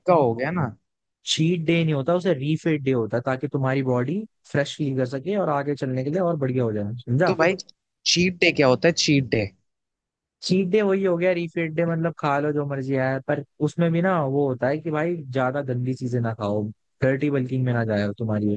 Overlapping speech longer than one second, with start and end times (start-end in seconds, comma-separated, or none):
none